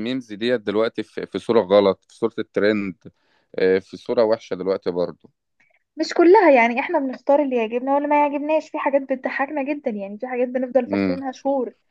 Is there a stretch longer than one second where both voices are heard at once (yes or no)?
no